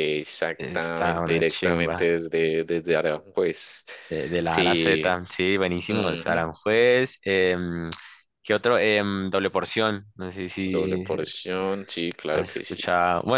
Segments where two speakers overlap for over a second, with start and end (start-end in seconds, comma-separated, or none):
0.6-2.1